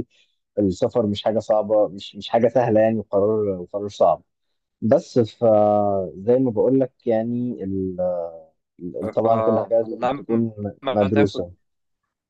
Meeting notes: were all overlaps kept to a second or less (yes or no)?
no